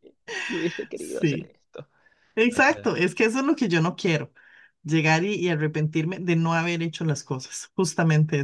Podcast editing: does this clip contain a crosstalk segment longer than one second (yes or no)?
no